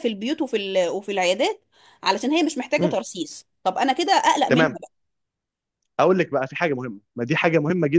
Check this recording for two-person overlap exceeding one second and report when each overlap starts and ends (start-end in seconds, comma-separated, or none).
none